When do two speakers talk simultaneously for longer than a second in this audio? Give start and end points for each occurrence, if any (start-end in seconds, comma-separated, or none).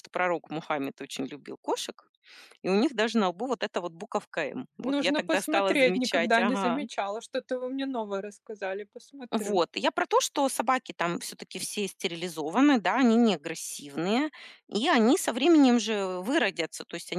4.8-6.8